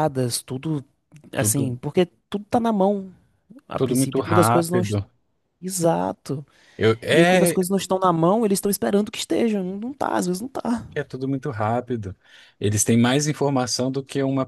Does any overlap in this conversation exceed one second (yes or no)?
yes